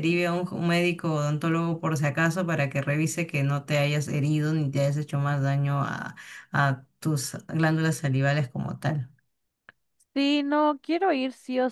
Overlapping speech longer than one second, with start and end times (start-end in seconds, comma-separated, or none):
none